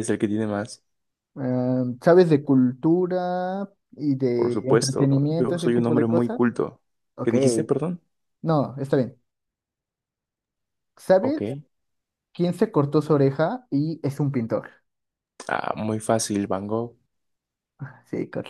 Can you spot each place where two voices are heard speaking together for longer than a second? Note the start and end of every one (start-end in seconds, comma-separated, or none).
4.3-6.4